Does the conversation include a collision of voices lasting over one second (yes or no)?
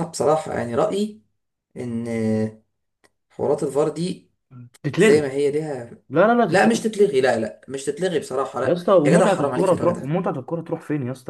yes